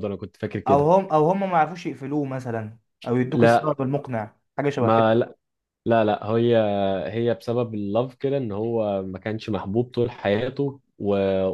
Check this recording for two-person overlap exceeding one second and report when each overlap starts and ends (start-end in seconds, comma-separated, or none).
none